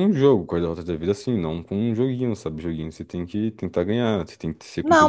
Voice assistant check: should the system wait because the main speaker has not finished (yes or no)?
no